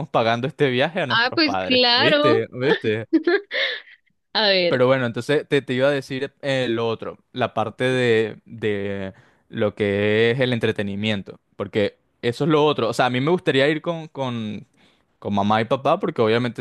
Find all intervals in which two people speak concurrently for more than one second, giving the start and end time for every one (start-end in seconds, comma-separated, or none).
1.1-2.5